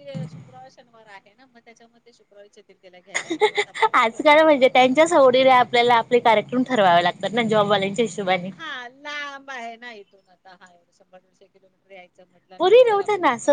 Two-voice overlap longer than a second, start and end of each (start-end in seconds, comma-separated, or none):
none